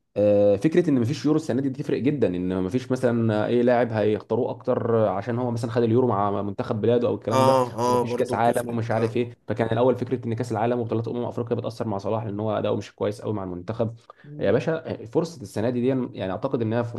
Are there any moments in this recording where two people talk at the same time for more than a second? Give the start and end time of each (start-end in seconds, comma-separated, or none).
7.3-9.3